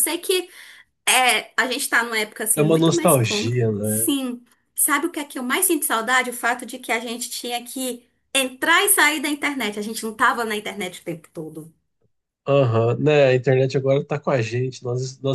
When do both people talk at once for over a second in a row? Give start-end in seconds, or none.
2.6-4.1